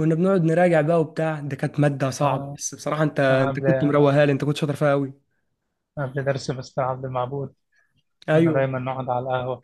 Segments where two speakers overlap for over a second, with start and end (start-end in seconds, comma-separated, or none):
none